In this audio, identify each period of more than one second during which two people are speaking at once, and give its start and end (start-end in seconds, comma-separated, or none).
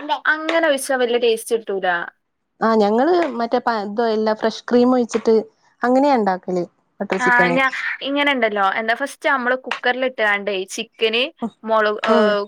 none